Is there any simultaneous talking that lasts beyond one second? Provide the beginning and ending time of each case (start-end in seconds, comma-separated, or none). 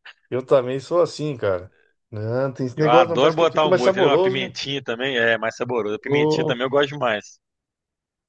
2.8-4.6